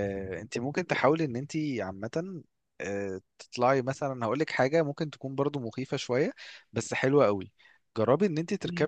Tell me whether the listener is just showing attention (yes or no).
yes